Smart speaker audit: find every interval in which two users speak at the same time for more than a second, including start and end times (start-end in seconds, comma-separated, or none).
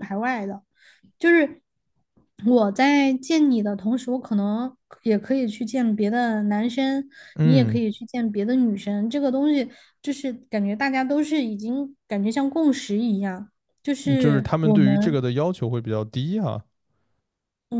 14.0-15.2